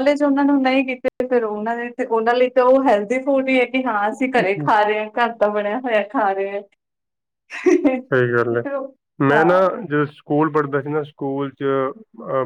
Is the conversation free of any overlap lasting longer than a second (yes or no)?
yes